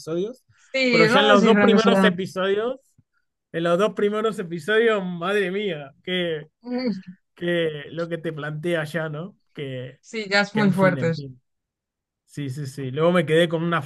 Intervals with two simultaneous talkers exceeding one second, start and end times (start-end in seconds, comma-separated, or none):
0.9-2.1